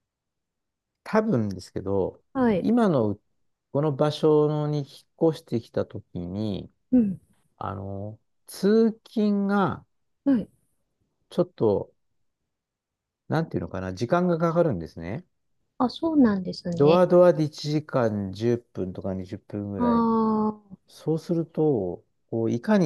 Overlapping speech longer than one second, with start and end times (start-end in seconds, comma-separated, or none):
none